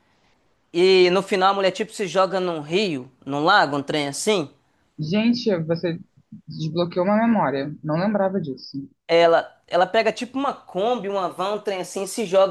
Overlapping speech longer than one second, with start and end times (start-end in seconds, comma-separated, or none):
none